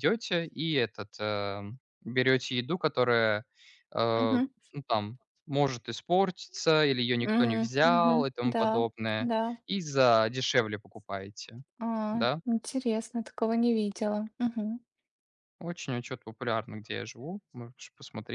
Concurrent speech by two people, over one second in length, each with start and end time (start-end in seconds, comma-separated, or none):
7.2-9.3